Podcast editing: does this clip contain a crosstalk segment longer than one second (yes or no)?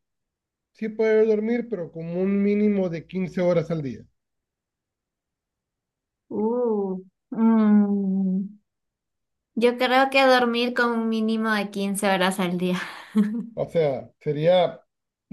no